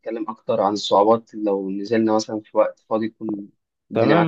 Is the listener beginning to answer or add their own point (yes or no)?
yes